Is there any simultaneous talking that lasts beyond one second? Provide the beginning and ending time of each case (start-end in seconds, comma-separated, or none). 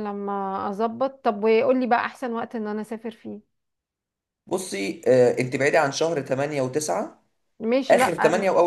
none